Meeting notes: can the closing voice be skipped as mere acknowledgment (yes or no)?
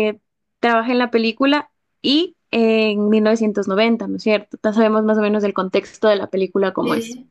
no